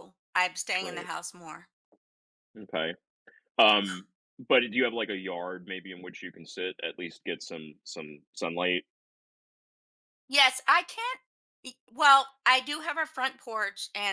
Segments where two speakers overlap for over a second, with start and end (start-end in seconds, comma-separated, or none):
none